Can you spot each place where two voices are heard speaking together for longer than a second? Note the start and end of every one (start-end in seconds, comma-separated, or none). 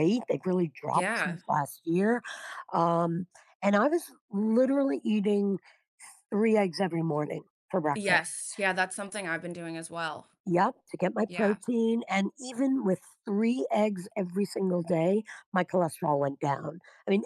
none